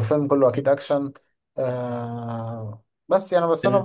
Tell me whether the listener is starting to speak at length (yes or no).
no